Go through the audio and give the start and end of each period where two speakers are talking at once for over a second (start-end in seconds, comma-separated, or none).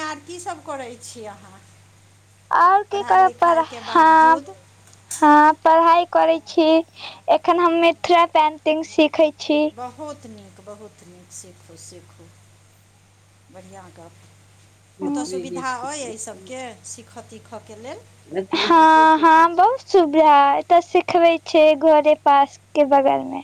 2.9-4.4